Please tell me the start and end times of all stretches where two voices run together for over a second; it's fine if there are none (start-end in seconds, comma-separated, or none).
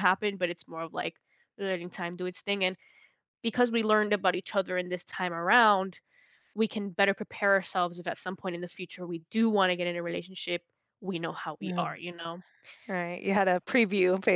none